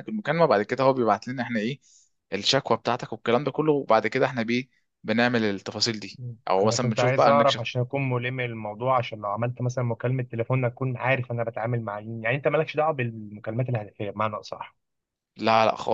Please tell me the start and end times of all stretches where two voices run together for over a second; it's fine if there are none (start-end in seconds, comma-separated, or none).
6.2-7.6